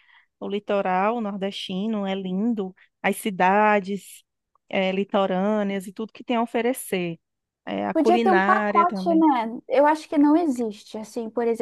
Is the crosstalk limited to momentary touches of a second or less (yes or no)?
no